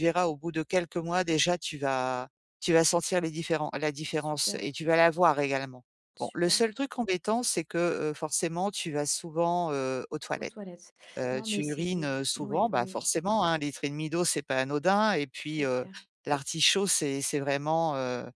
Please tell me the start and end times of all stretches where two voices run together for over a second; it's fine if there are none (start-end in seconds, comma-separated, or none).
11.3-13.0